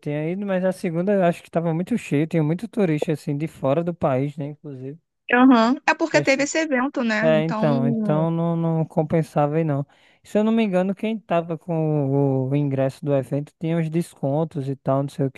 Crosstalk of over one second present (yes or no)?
no